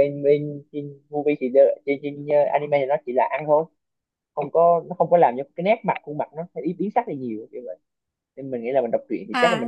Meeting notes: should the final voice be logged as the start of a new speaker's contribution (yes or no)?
yes